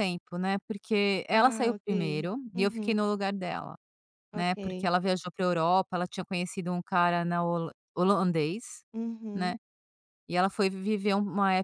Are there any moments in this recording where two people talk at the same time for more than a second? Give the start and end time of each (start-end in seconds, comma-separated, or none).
1.3-3.0